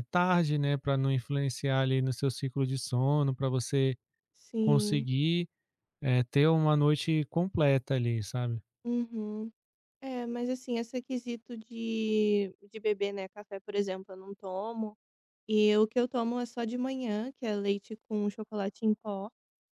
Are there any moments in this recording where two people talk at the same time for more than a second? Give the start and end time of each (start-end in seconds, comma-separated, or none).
none